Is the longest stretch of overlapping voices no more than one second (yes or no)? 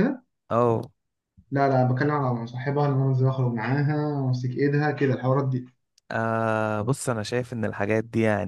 yes